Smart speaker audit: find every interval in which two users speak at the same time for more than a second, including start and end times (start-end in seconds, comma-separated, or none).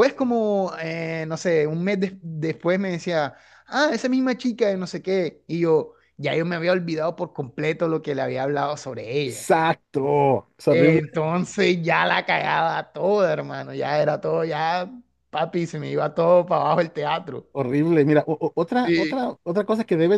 none